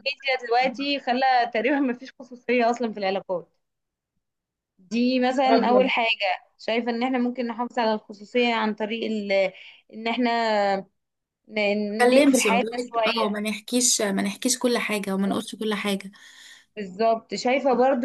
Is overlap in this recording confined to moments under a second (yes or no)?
no